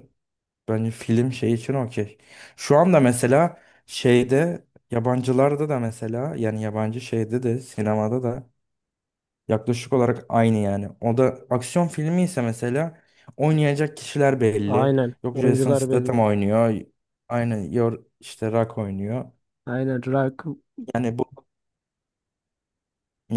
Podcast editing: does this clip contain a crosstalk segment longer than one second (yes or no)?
yes